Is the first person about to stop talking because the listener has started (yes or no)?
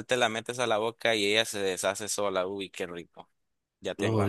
yes